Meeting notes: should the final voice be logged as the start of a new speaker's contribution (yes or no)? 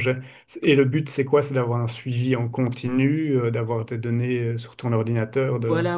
yes